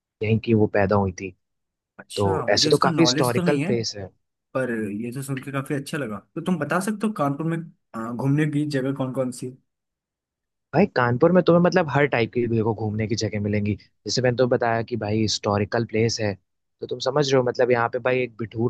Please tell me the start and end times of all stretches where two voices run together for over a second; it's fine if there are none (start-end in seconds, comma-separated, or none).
2.2-3.7